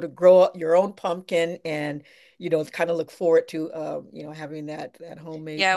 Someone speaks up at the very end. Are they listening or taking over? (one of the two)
taking over